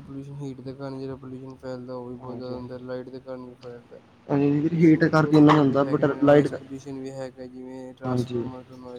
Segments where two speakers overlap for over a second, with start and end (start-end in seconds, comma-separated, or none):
4.7-6.5